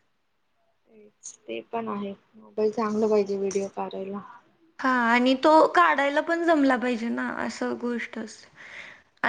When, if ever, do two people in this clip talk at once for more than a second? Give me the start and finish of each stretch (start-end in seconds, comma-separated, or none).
none